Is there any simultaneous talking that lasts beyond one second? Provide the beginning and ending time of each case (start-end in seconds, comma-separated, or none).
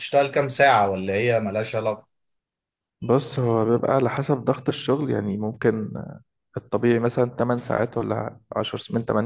none